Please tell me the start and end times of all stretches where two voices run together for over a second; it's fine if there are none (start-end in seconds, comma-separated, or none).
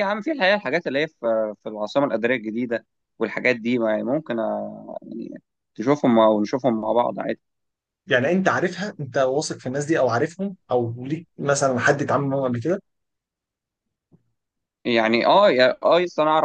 none